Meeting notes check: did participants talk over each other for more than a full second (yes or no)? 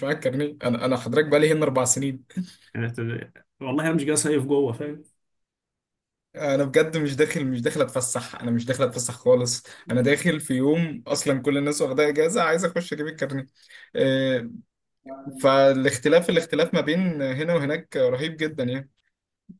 no